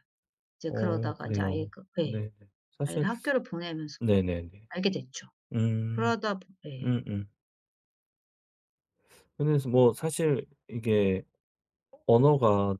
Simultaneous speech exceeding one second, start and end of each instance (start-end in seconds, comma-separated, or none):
0.7-2.2